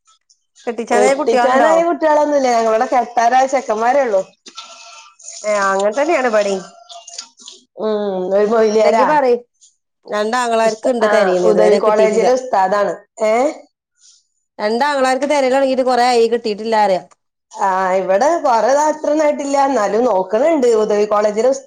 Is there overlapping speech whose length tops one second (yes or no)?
yes